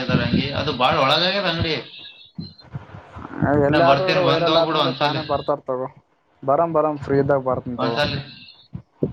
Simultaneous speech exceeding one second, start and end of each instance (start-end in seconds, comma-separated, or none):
3.7-5.2